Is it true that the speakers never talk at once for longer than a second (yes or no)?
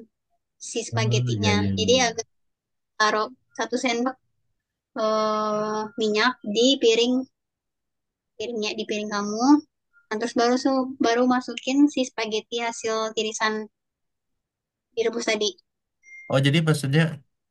no